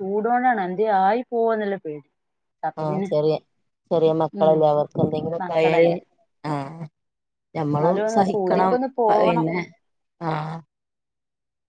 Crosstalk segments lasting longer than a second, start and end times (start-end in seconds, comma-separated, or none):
7.7-9.4